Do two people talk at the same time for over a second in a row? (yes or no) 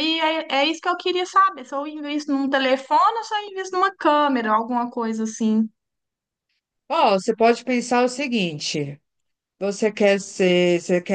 no